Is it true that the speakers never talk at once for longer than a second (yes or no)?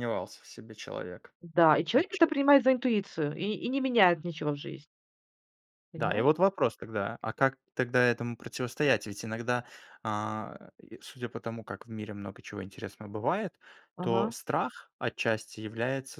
yes